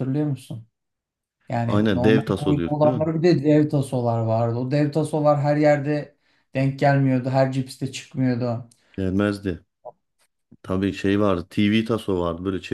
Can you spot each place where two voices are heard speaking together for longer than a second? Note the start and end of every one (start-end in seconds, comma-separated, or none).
1.7-3.1